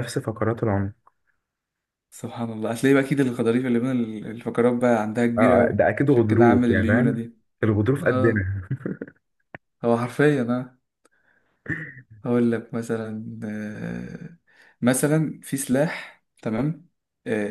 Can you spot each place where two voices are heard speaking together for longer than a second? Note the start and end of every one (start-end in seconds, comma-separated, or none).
5.4-7.3